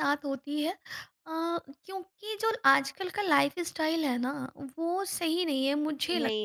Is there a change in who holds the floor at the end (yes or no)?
yes